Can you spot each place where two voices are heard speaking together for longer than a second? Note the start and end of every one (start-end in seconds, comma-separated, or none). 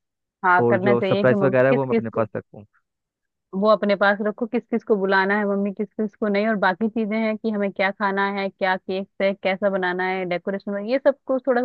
0.6-2.2